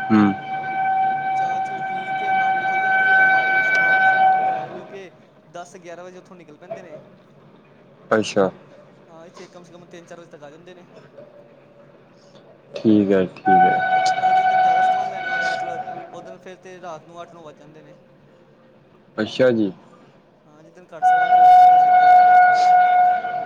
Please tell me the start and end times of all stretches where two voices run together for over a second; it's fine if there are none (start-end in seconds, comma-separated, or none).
none